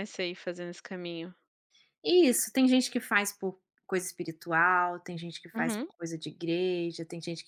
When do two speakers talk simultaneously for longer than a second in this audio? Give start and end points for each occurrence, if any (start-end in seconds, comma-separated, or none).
none